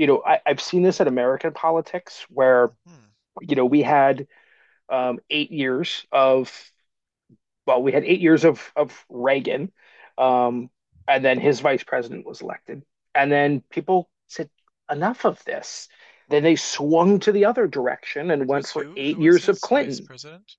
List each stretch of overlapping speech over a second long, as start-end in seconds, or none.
18.4-20.1